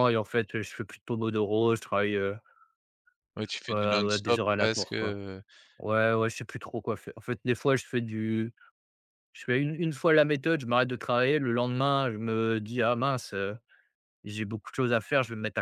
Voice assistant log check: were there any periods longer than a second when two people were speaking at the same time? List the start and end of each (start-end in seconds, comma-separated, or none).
3.7-5.2